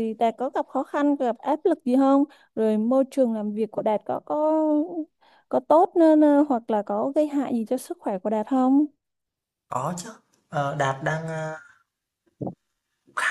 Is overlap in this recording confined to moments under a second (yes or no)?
yes